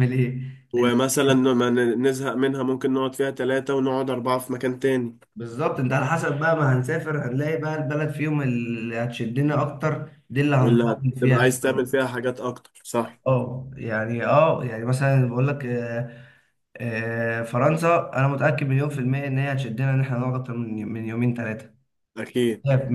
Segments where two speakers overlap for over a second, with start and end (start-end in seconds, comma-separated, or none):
10.6-11.9